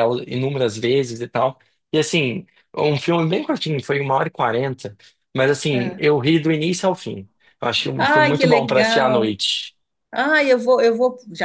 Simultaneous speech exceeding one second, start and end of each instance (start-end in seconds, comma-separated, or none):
8.0-9.3